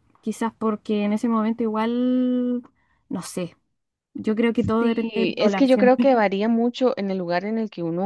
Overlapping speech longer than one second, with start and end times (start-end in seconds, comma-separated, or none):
4.8-6.1